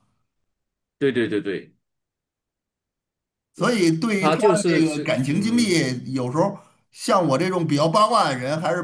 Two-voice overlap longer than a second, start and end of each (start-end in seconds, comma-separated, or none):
4.2-5.7